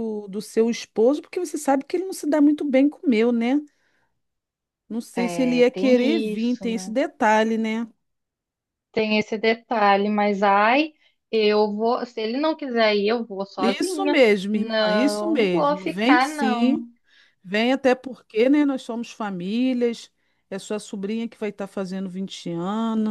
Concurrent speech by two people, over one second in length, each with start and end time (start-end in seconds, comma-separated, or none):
5.2-6.9, 13.6-16.8